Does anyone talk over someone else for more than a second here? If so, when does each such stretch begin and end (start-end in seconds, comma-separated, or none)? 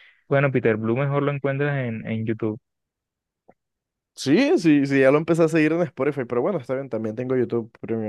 none